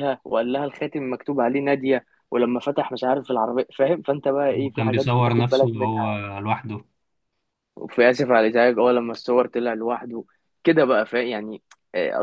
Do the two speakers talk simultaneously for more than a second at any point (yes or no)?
yes